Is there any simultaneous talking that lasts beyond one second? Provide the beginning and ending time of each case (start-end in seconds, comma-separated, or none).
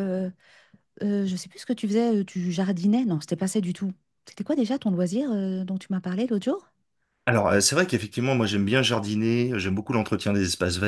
none